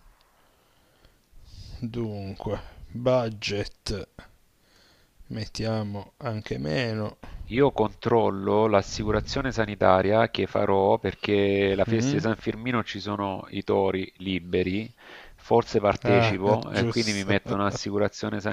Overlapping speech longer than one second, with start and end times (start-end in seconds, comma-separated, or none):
16.0-17.6